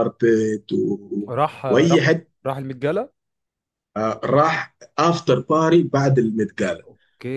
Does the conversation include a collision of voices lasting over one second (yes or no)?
no